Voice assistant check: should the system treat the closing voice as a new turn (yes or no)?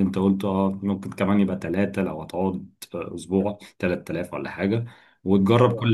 no